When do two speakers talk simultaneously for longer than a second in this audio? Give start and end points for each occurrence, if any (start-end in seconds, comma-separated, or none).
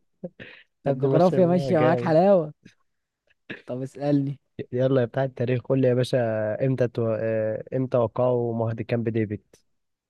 0.9-2.2